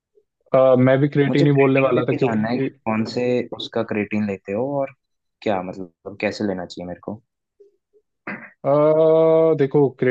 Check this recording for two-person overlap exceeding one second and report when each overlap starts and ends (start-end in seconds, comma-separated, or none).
1.3-2.7